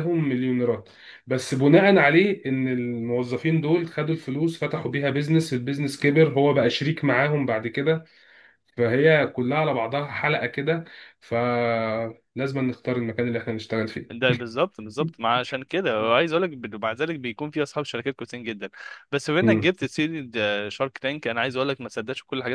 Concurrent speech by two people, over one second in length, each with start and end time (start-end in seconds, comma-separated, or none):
none